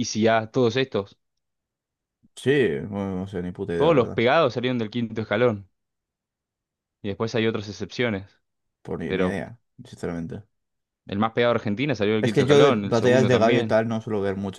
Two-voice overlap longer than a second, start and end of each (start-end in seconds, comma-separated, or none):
12.2-13.8